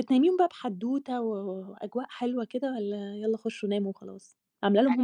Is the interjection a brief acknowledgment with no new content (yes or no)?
yes